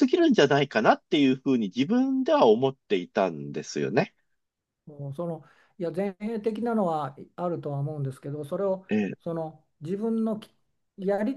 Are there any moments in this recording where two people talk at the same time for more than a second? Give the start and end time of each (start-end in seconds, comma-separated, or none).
none